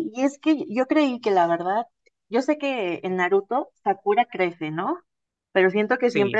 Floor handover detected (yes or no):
no